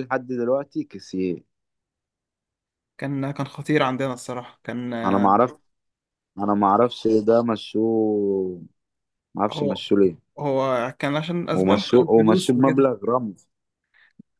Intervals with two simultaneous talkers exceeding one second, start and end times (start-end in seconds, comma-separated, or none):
11.6-12.9